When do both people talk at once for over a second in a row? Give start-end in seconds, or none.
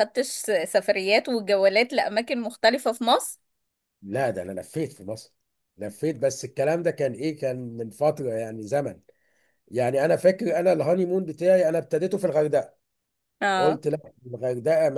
none